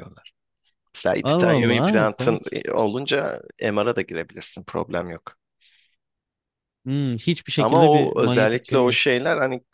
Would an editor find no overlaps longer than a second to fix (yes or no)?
no